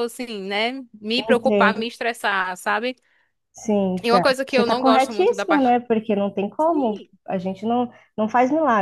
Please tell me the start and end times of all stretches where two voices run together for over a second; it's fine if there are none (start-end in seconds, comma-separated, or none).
4.0-5.8